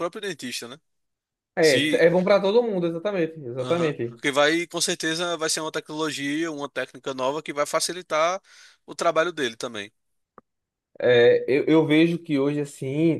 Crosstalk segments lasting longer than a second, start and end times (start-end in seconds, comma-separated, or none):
none